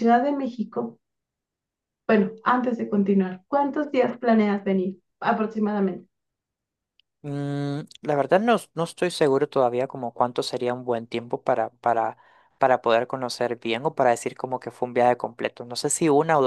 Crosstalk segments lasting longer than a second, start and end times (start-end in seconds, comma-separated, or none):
none